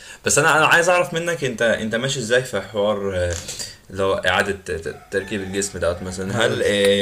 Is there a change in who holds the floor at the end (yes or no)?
no